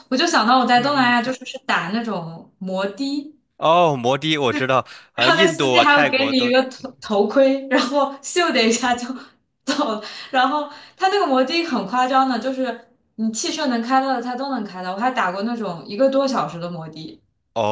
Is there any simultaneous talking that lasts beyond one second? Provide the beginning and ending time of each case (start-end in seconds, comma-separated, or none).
5.2-6.5